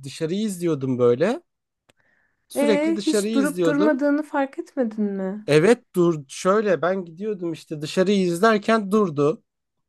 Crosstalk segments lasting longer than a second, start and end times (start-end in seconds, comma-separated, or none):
2.5-4.0